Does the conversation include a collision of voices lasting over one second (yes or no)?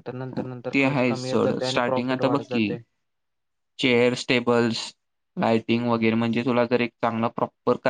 yes